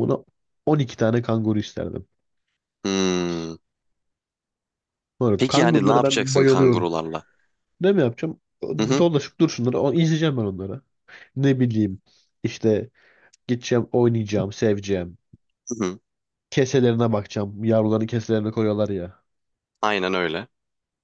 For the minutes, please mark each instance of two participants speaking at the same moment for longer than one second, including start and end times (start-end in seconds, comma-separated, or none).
5.4-6.9